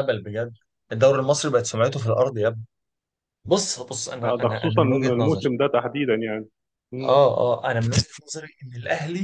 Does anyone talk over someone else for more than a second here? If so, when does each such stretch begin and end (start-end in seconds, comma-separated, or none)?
4.2-5.5